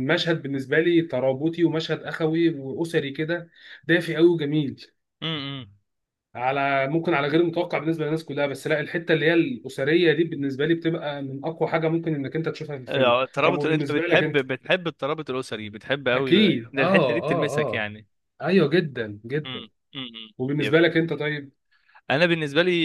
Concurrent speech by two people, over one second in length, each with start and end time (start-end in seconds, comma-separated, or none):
12.9-14.4, 16.1-17.9